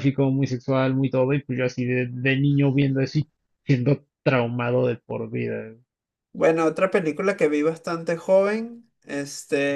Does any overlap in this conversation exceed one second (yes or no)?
no